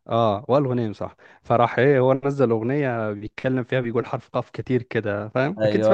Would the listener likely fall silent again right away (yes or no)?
no